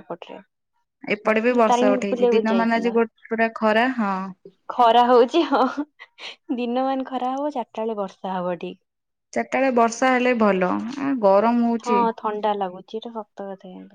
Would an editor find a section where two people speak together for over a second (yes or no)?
yes